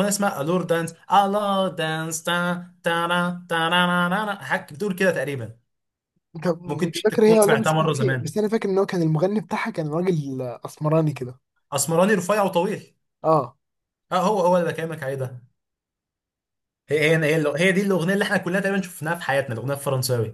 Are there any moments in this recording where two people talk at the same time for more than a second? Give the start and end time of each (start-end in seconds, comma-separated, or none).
6.6-8.3